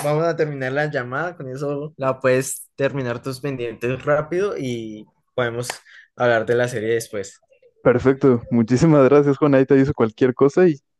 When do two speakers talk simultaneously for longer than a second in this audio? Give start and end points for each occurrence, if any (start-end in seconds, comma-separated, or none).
none